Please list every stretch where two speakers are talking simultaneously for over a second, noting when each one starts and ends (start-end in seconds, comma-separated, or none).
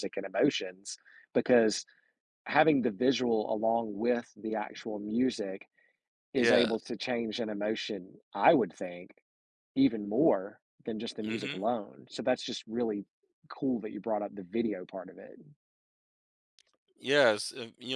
none